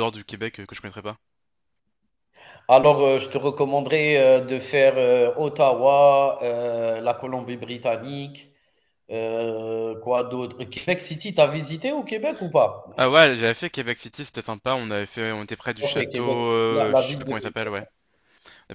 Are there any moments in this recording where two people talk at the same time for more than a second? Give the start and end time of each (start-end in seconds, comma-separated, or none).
15.8-17.7